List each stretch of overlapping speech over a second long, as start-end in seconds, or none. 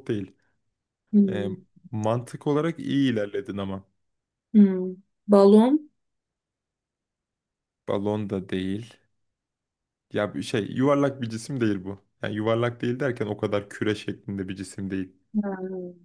none